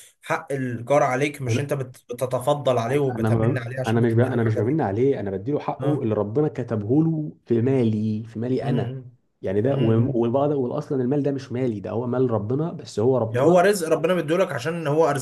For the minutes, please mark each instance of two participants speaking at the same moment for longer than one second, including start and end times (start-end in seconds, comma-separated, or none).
2.9-4.8